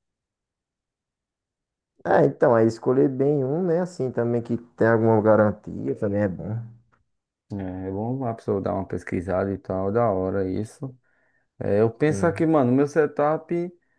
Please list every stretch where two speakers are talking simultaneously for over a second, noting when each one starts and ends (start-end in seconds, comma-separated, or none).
none